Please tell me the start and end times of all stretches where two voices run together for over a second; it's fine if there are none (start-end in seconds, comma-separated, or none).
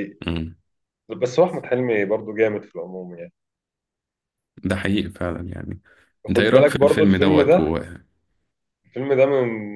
6.3-7.7